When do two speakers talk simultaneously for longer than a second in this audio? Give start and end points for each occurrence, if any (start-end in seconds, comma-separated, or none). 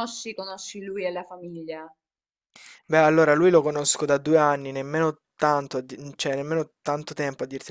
none